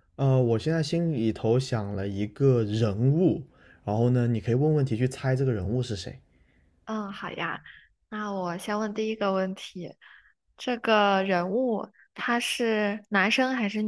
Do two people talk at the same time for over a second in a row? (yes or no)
no